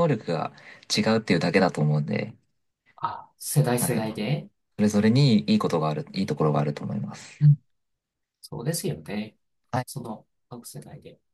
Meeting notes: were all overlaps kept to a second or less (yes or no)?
yes